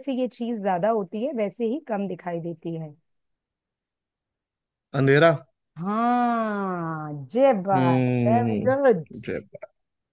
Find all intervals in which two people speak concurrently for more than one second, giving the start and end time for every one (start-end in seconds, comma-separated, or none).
7.7-9.0